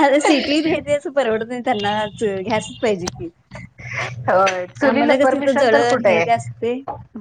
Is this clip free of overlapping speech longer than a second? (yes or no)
no